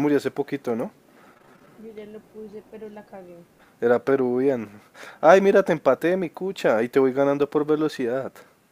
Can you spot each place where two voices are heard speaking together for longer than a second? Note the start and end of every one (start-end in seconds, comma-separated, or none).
none